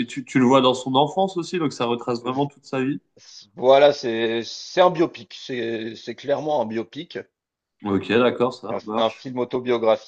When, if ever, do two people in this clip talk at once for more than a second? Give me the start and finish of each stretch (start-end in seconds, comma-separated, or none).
none